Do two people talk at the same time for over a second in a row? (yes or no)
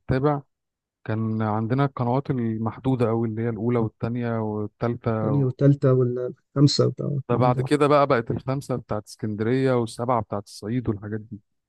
no